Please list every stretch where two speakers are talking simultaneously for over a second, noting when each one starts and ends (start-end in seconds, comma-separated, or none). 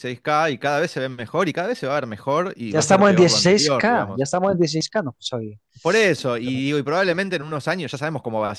2.6-4.3